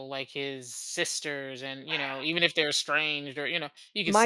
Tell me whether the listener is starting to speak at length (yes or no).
yes